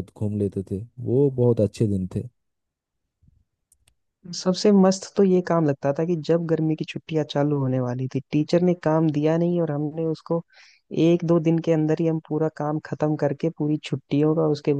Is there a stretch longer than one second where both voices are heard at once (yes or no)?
no